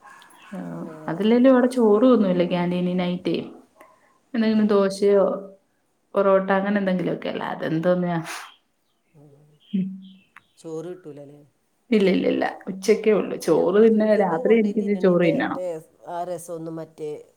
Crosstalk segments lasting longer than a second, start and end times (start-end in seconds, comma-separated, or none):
13.3-15.6